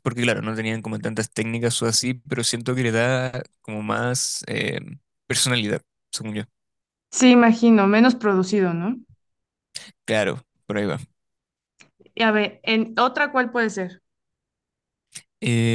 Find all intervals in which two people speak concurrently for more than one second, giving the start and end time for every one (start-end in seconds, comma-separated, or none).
none